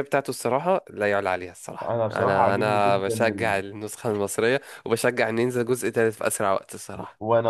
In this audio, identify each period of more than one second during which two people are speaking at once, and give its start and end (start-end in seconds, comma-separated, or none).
1.8-3.6